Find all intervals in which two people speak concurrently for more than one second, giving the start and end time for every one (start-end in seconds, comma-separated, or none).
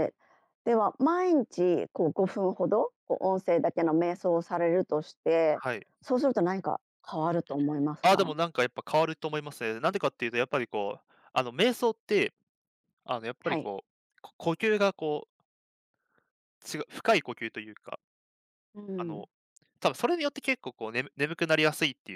none